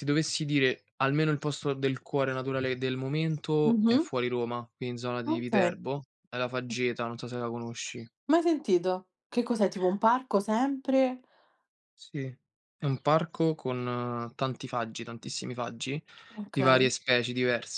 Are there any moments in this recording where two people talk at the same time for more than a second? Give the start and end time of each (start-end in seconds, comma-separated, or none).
none